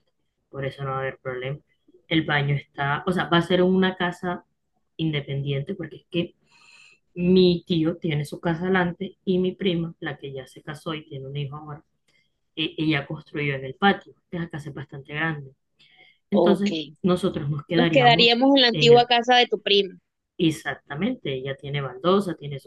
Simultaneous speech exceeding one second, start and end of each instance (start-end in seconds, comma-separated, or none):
17.8-19.1